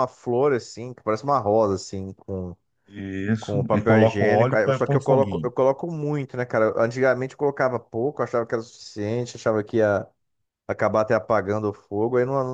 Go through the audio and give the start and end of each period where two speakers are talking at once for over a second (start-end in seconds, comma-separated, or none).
3.4-5.5